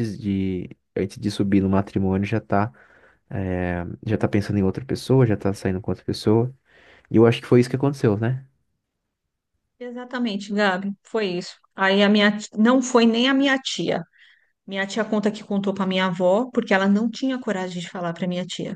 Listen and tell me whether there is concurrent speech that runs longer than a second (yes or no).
no